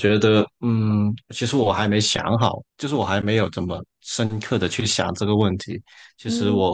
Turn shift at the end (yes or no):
no